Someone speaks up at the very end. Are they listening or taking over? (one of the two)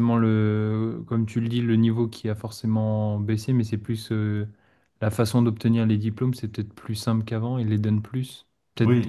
taking over